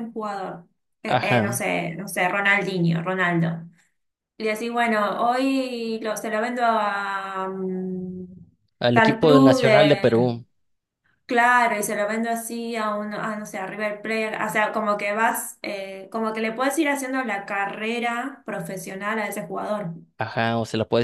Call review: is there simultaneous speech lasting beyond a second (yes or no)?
yes